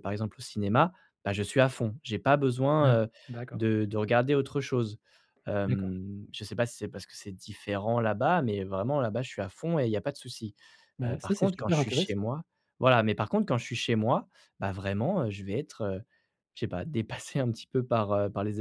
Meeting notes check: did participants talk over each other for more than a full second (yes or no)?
yes